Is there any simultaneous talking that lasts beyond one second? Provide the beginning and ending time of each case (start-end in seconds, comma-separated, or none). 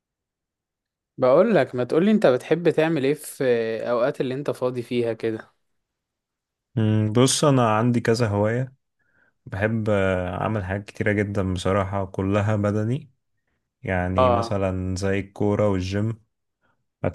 none